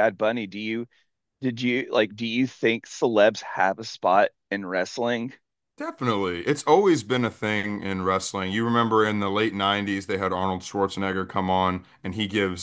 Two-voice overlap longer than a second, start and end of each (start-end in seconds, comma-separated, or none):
none